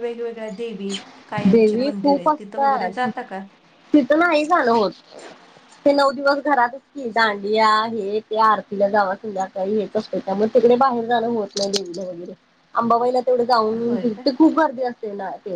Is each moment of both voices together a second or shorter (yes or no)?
no